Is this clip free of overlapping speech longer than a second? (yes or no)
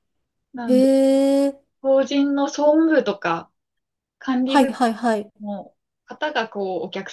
yes